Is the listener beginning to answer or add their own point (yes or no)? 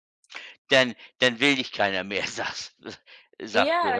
yes